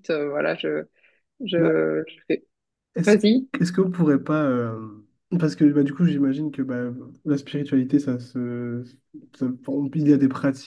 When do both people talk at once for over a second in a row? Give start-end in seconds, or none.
none